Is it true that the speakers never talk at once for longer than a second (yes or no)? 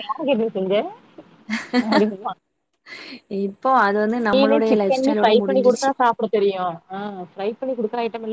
no